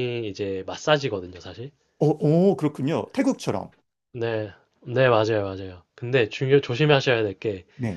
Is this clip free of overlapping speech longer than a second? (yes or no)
yes